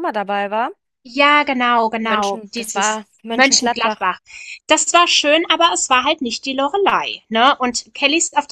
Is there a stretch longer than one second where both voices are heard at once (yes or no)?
yes